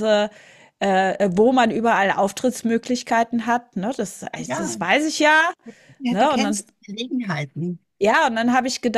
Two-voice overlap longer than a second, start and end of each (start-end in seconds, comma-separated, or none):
none